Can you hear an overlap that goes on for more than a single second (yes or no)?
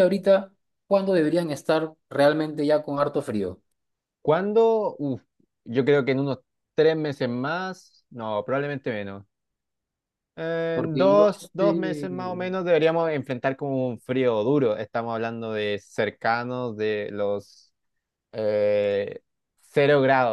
yes